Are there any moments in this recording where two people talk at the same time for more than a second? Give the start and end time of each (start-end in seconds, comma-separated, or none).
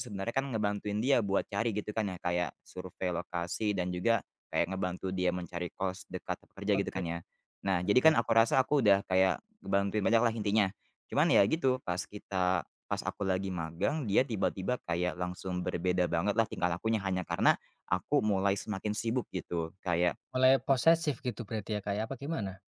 none